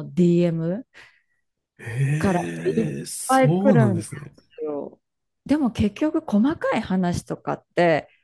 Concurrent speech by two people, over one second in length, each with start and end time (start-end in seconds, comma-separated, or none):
2.2-4.1